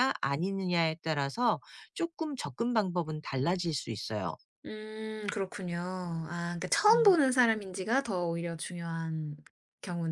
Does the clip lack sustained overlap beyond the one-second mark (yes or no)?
yes